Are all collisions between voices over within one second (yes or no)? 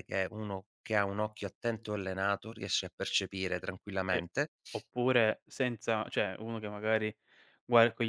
yes